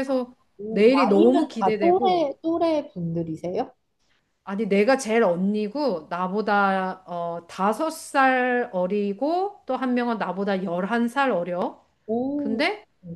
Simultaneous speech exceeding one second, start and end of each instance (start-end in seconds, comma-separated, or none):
0.6-2.3